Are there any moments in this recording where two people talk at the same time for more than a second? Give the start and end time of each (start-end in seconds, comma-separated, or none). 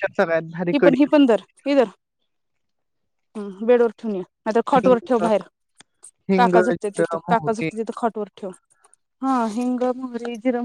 6.4-7.7